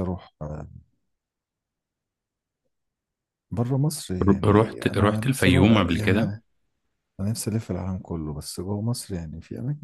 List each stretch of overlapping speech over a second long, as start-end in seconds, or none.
4.2-6.2